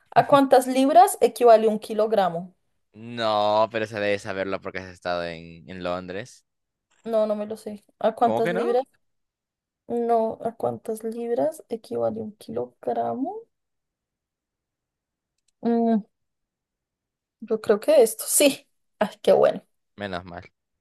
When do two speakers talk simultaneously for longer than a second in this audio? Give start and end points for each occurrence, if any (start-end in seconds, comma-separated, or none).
none